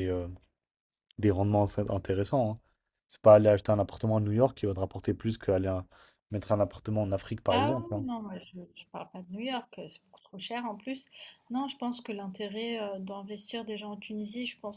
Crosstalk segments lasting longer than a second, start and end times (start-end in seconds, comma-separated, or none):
none